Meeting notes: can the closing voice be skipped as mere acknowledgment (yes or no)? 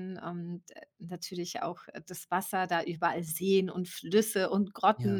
yes